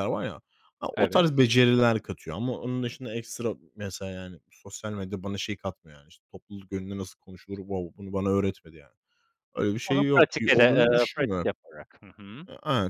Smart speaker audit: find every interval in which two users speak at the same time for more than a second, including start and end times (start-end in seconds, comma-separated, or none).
9.8-11.5